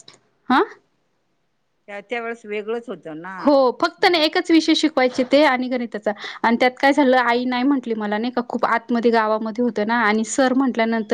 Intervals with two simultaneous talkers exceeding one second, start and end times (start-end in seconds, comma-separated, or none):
none